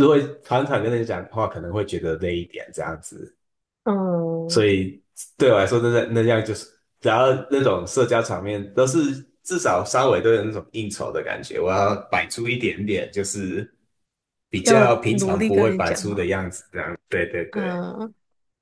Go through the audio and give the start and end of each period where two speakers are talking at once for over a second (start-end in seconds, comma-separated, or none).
14.6-16.2